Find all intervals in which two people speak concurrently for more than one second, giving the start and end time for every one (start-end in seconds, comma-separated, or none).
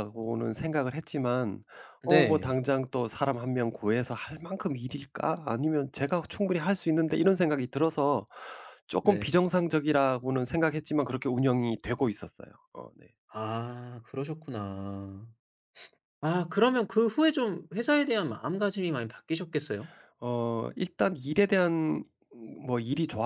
none